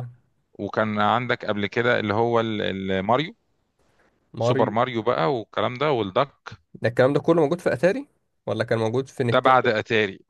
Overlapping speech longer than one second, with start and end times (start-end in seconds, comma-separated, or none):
none